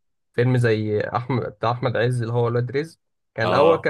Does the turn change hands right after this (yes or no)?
no